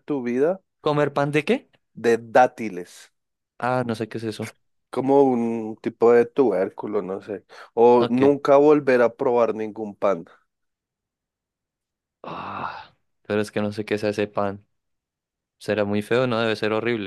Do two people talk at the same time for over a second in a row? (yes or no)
no